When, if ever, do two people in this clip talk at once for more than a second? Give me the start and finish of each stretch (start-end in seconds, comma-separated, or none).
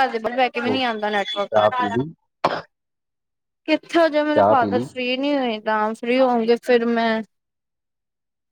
0.7-2.1